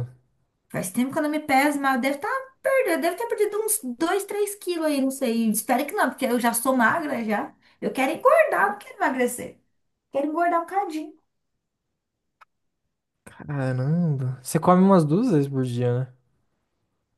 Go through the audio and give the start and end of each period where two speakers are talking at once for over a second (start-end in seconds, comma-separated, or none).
none